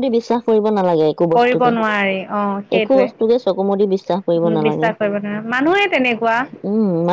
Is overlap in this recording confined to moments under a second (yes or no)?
yes